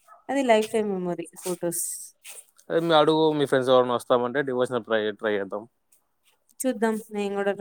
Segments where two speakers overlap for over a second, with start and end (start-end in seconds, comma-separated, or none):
none